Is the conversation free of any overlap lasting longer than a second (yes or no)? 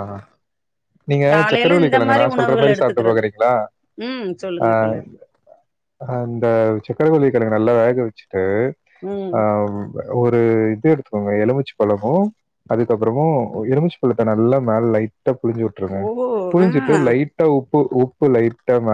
no